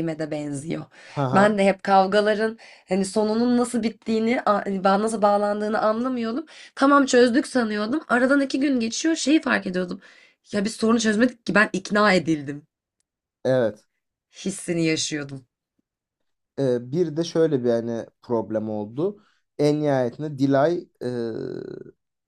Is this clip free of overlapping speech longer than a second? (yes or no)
yes